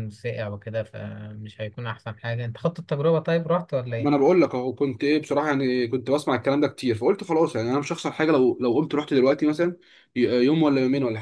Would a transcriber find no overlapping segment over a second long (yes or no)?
yes